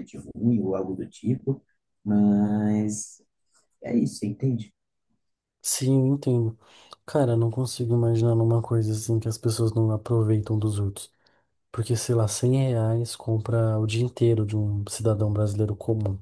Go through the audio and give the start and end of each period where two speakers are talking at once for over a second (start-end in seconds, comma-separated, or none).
none